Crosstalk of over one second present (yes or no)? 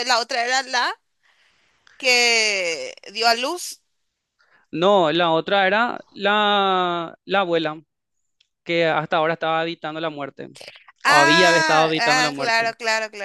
yes